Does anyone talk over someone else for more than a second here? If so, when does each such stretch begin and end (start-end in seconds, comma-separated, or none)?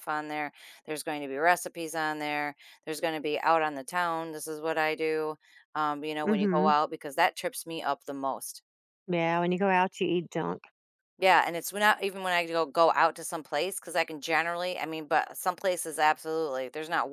none